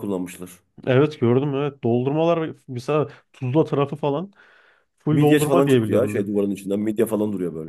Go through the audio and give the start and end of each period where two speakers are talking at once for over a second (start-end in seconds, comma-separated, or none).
5.1-6.3